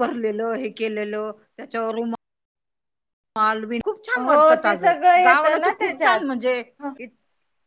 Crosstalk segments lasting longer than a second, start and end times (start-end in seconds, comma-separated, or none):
4.2-6.2